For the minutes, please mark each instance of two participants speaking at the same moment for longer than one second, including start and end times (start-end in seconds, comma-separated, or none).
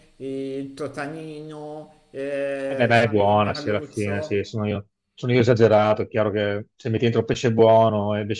2.6-4.4